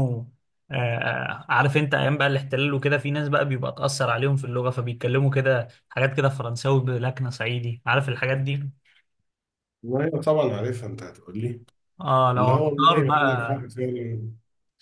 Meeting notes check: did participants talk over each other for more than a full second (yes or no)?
yes